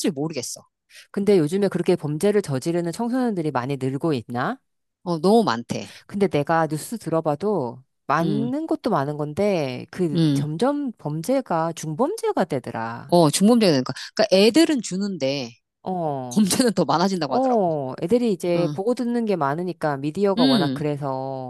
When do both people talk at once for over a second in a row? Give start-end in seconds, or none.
none